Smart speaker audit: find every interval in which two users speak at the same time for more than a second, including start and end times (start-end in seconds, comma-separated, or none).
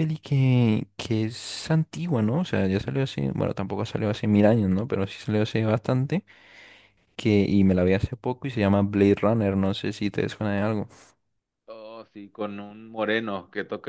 none